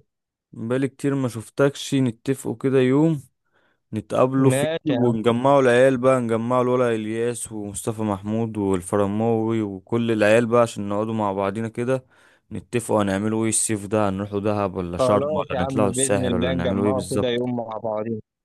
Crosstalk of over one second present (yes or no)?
yes